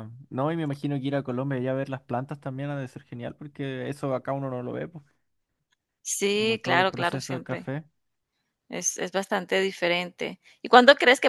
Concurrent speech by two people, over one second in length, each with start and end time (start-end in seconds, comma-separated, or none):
6.3-7.7